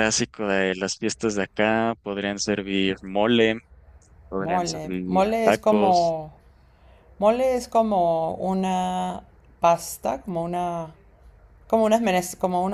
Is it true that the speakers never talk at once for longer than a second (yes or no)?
no